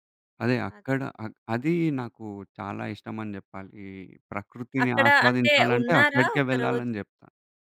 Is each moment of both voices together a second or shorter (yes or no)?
no